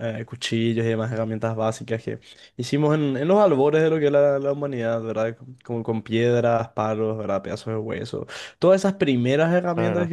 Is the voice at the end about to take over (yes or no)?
no